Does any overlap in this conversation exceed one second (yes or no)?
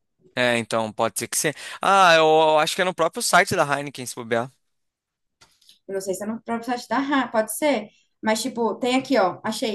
no